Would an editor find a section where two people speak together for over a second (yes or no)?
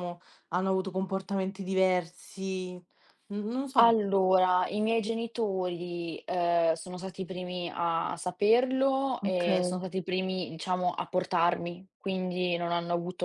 no